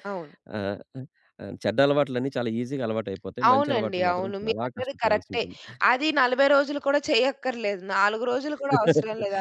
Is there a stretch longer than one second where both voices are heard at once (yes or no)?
yes